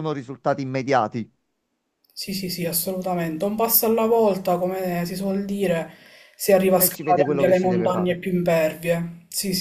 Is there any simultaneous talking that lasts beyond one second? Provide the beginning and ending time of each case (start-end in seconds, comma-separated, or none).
6.8-8.2